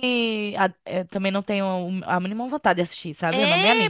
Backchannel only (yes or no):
no